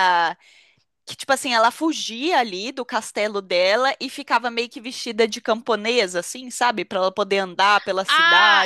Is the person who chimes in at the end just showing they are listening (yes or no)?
no